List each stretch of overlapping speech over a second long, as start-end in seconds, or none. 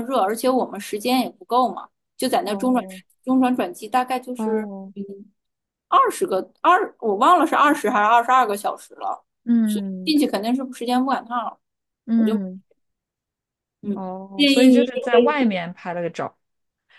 13.9-15.4